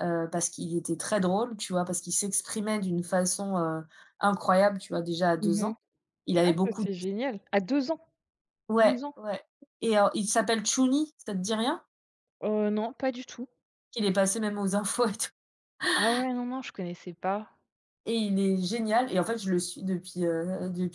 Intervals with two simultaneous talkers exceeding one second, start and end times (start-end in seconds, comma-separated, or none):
none